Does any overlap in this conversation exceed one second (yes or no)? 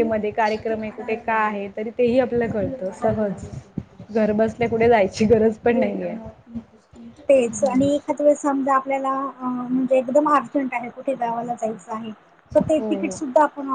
no